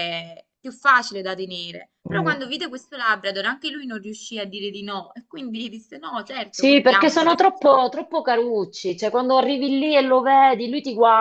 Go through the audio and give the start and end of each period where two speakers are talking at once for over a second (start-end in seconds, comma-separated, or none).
6.5-7.8